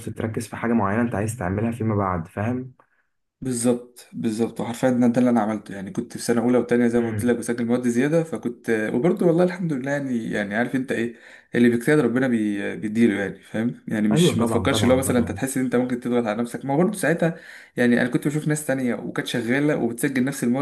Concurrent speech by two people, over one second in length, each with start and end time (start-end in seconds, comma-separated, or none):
14.1-15.4